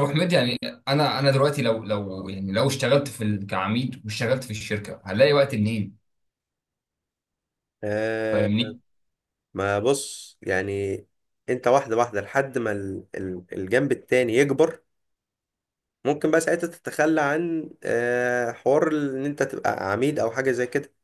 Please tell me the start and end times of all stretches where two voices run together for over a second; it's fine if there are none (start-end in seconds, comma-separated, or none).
none